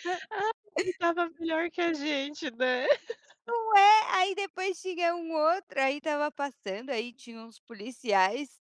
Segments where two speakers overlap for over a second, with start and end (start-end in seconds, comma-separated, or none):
none